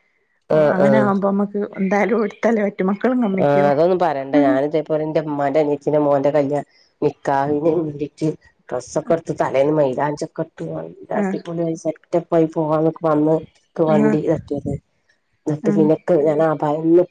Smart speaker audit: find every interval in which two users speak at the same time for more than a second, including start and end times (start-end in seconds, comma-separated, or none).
none